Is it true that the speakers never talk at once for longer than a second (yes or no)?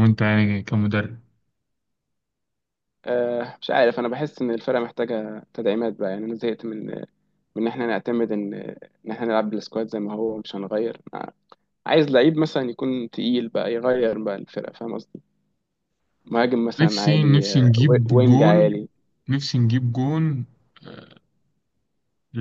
no